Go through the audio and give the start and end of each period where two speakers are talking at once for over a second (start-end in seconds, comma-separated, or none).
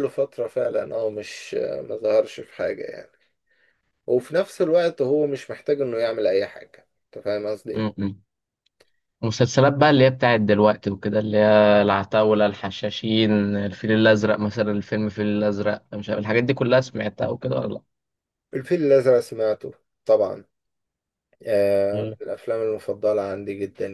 none